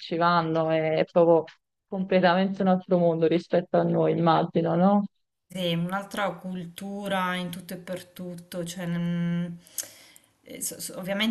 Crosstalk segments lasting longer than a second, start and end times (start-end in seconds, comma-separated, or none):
none